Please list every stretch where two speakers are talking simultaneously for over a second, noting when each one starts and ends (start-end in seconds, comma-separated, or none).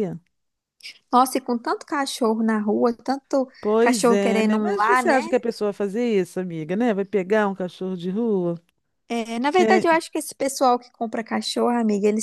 3.6-5.2